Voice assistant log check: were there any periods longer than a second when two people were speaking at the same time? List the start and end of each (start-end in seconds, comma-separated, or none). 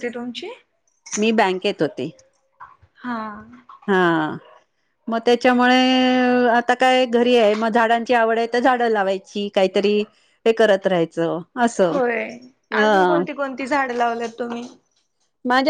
none